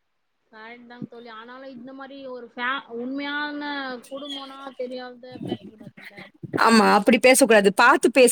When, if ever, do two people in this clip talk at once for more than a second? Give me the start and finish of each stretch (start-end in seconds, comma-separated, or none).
none